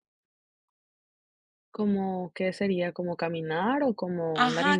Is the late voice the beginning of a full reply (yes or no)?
yes